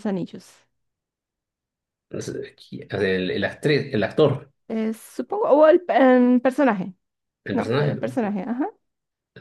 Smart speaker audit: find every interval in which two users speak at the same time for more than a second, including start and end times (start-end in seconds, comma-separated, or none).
none